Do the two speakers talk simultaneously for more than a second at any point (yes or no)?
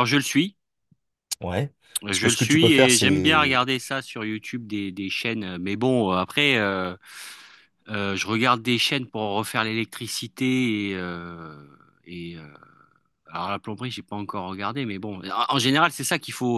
yes